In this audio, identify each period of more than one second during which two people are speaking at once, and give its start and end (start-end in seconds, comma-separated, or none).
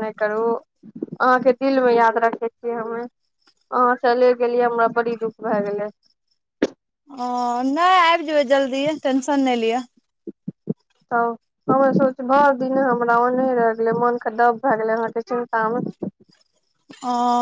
none